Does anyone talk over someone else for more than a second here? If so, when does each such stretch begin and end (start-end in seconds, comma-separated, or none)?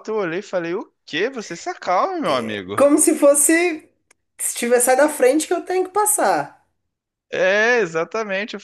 none